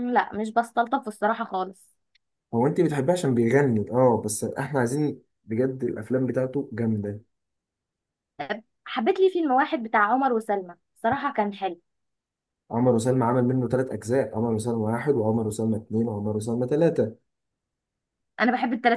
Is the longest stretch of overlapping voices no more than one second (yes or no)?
yes